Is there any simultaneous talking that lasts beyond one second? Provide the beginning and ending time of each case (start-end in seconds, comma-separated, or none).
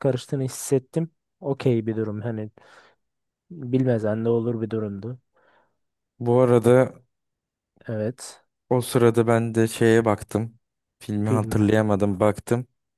none